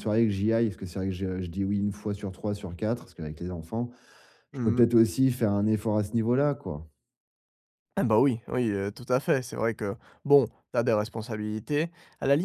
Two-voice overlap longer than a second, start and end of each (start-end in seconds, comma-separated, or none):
none